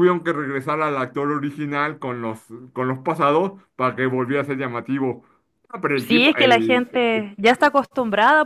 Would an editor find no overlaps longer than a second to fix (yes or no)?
no